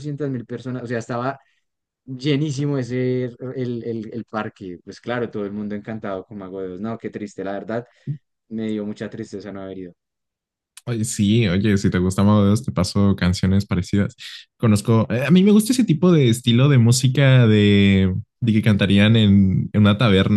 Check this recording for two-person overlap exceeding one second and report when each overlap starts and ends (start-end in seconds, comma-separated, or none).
none